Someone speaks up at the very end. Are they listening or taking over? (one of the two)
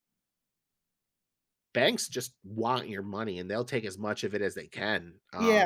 taking over